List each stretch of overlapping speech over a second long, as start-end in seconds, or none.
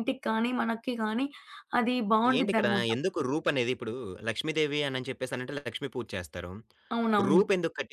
none